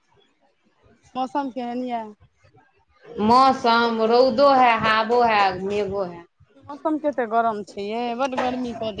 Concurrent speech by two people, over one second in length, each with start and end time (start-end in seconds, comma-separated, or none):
none